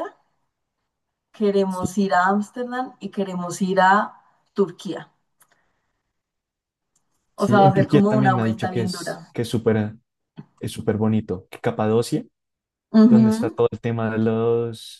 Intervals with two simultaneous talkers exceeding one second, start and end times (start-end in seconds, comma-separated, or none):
7.4-9.3